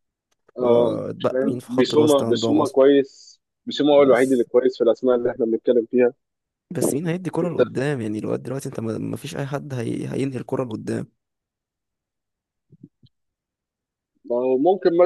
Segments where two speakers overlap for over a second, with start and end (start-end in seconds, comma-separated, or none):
0.6-2.8